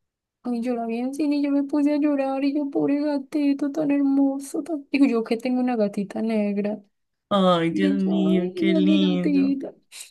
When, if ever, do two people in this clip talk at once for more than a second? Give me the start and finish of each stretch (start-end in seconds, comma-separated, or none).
7.7-9.5